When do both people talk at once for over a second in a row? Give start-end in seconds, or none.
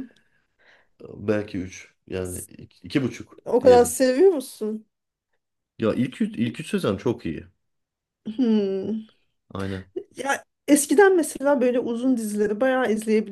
none